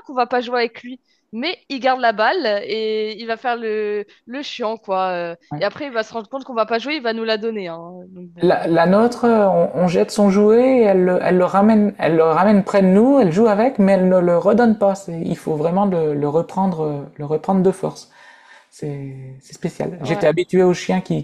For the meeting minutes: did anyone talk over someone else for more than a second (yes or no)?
no